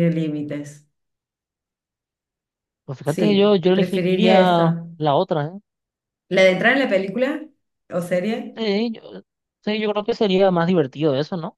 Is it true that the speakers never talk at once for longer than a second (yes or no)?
no